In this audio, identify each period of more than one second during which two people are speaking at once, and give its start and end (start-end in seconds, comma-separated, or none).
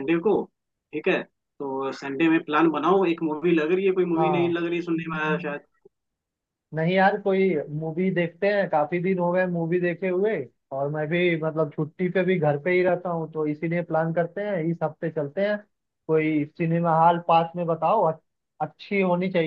none